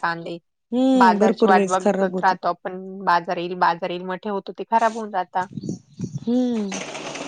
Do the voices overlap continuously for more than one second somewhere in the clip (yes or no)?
yes